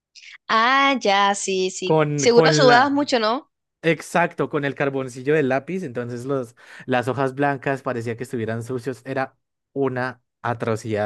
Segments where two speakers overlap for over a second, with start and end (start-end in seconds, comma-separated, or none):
1.8-3.2